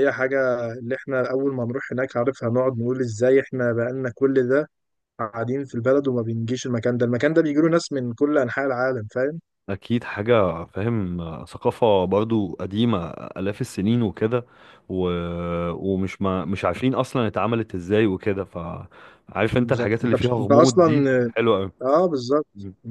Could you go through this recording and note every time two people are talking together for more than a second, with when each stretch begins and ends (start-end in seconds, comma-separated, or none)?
19.5-21.1